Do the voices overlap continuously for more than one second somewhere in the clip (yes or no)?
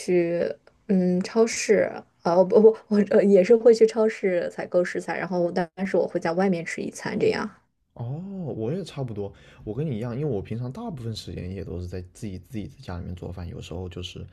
no